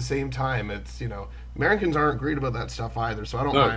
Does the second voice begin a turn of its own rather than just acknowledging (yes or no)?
no